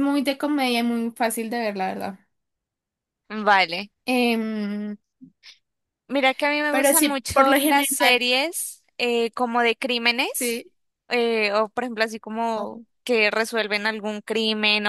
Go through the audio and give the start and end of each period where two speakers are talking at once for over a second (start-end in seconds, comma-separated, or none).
6.7-8.3